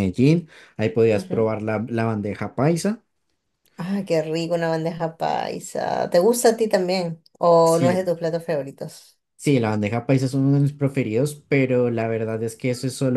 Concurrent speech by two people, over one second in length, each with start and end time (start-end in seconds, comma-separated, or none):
none